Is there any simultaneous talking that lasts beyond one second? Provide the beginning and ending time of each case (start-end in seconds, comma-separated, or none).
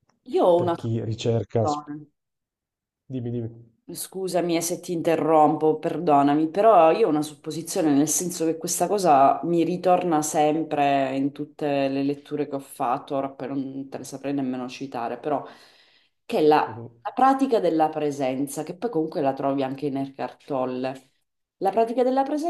0.6-1.8